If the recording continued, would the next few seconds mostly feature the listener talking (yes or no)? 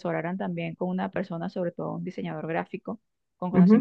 no